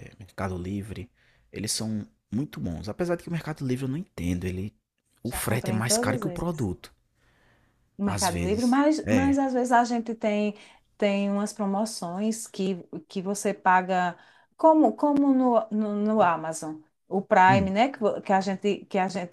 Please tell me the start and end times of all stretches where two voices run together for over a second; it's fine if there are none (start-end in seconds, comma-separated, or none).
5.2-6.7, 8.0-9.4